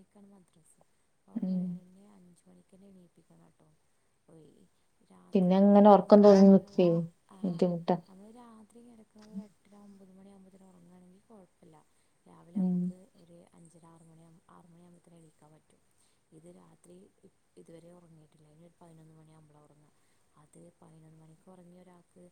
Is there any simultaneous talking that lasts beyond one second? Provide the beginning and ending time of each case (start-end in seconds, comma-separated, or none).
none